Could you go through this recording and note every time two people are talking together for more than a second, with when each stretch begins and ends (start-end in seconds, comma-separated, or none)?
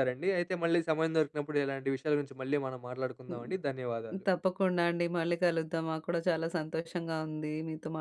none